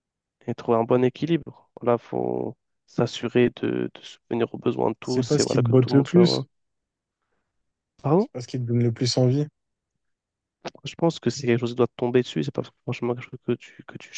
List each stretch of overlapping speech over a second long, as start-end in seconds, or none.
5.0-6.5